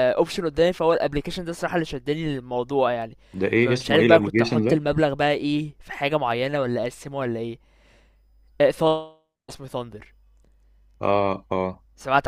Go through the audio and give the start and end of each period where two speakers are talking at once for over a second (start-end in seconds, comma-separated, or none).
3.6-4.8